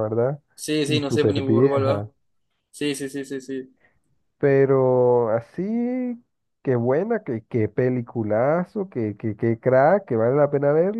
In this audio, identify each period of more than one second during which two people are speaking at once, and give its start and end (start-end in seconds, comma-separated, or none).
0.9-2.1